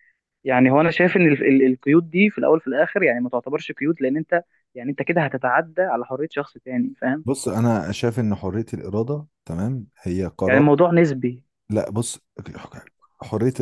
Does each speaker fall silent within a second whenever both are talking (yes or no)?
yes